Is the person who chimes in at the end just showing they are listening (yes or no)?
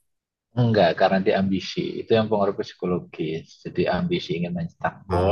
yes